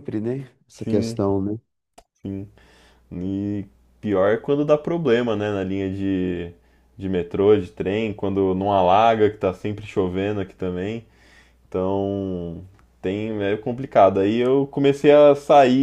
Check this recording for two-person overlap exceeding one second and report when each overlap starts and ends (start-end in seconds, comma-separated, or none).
none